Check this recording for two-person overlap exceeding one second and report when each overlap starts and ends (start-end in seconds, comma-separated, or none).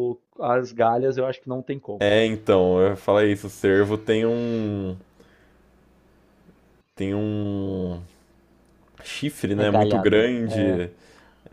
none